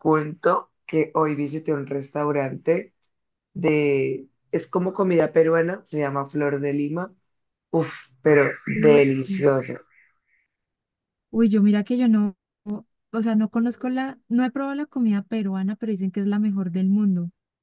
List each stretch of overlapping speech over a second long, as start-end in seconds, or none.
none